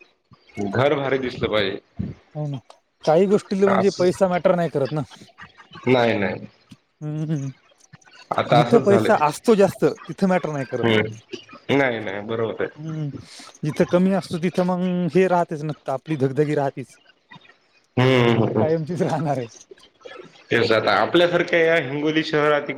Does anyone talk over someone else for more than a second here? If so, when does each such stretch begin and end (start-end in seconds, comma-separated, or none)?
none